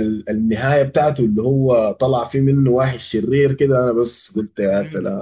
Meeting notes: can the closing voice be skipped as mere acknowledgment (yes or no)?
no